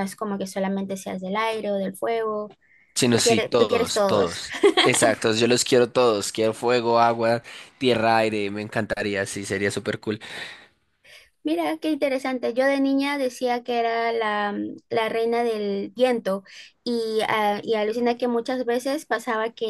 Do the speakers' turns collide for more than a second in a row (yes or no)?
yes